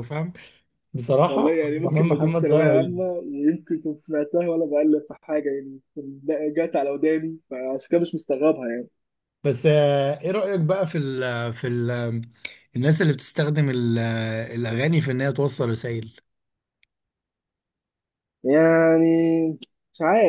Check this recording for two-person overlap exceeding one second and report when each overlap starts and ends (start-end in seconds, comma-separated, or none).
1.2-3.1